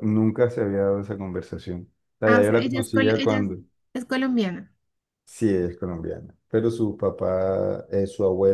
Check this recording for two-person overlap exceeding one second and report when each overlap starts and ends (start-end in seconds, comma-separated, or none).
2.2-3.5